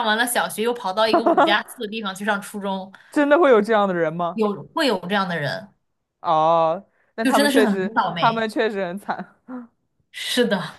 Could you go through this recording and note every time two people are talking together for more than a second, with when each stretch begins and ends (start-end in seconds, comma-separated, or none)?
7.2-8.5